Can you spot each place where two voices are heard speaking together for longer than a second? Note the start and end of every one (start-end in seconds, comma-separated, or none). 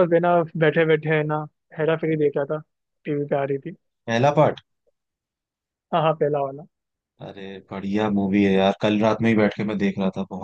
none